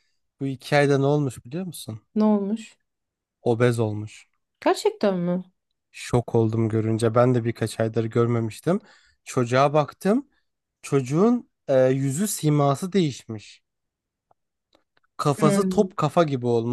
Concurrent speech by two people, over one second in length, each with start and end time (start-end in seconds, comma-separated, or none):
none